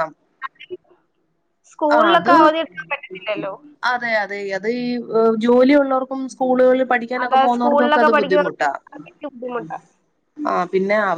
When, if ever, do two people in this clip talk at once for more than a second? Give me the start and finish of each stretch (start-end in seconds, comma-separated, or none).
7.2-8.7